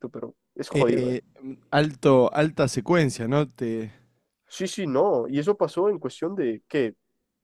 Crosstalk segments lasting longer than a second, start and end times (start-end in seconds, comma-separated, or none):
none